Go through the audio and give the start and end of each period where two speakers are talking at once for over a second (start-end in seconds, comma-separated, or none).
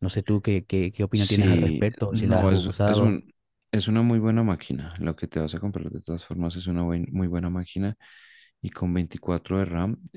1.1-3.2